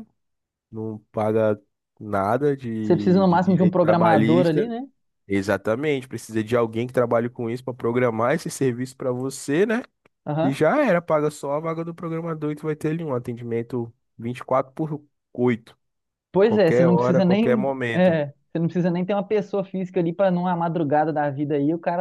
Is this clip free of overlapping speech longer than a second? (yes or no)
no